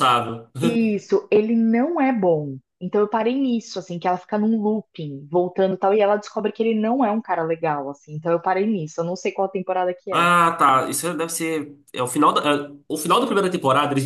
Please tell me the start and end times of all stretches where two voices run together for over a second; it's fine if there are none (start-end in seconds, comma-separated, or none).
none